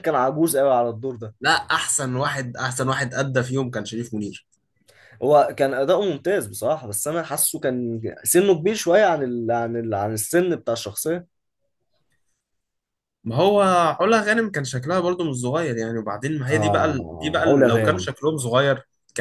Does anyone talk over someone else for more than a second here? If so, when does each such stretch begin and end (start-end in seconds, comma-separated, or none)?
16.5-18.1